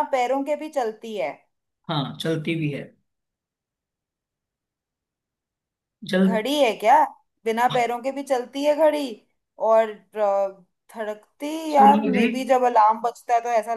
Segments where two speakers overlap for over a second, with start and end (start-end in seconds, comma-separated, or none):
none